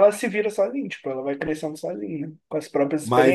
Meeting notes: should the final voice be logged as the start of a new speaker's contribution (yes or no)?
yes